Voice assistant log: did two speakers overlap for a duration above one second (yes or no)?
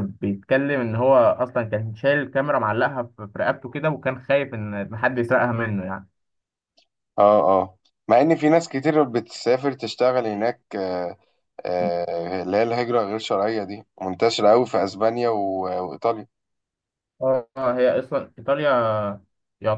no